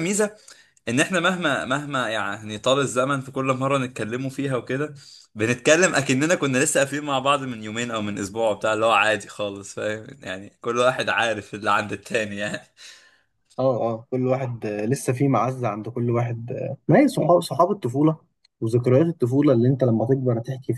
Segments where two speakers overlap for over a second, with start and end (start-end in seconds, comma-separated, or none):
none